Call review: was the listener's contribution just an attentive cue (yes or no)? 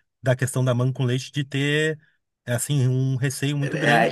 no